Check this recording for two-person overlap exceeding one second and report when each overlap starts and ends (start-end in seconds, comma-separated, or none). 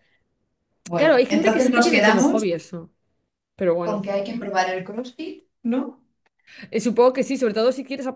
0.9-2.5